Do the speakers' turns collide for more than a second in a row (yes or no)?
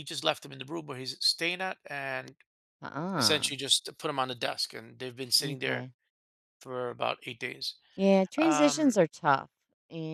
no